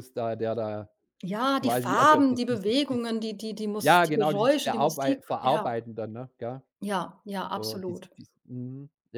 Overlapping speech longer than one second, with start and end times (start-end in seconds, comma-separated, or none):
1.6-3.1, 3.8-5.7